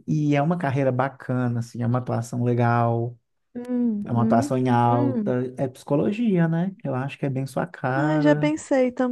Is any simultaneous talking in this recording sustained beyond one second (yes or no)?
yes